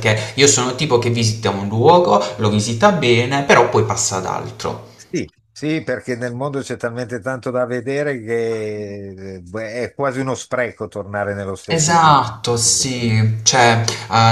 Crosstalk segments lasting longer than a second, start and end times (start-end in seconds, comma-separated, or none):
11.7-12.9